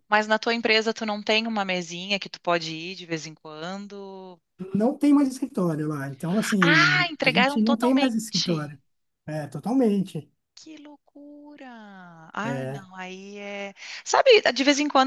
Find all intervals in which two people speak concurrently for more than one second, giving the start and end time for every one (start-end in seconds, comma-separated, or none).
6.6-8.7